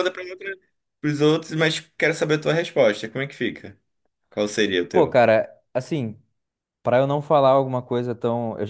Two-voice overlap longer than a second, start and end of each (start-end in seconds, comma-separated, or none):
none